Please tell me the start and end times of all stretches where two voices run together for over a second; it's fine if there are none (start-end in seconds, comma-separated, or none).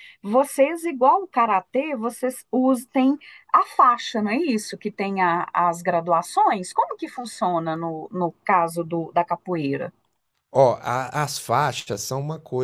none